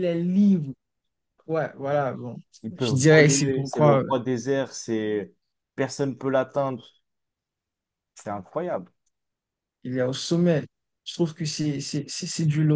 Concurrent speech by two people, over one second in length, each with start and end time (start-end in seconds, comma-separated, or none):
2.8-4.1